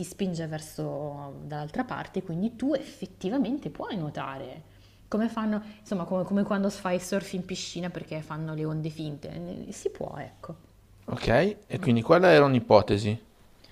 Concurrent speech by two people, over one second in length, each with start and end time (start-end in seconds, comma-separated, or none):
none